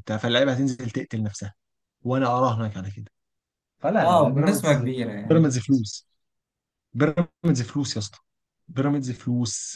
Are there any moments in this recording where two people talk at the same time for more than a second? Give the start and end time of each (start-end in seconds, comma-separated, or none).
4.0-5.5